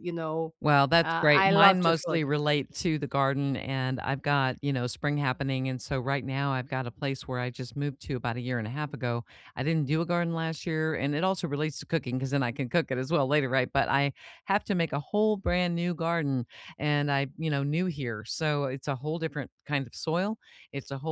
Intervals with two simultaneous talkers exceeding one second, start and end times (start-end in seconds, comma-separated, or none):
1.0-2.3